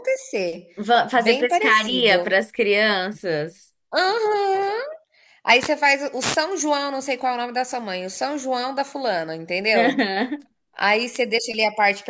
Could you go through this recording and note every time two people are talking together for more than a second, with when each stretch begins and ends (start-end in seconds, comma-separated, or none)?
1.1-2.4